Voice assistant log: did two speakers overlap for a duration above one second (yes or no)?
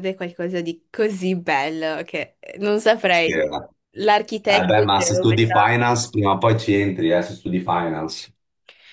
yes